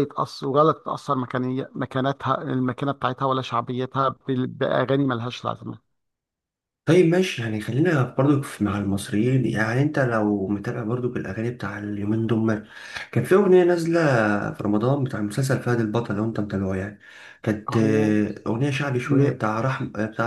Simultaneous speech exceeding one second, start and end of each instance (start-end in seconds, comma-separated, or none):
none